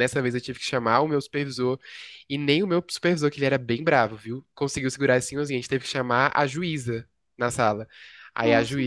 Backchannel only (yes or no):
yes